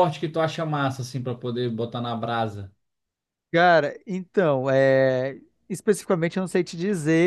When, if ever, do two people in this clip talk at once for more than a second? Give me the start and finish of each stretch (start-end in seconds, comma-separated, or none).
none